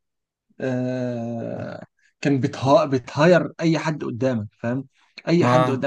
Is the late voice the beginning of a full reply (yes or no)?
no